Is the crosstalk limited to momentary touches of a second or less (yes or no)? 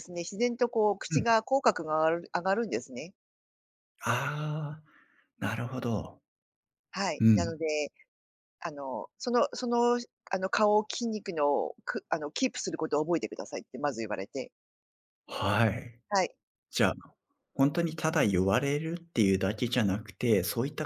yes